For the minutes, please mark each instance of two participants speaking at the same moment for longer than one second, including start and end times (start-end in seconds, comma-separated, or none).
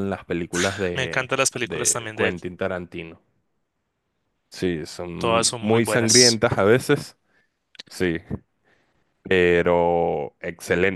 0.9-2.4, 5.2-6.4